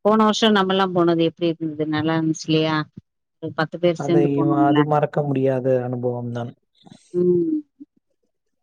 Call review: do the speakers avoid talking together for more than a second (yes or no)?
yes